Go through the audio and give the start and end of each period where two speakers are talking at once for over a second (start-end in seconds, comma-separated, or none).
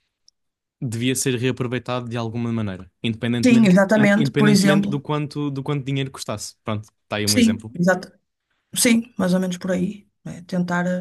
3.4-5.0